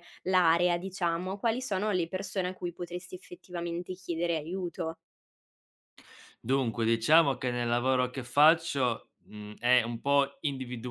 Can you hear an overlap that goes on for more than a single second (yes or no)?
no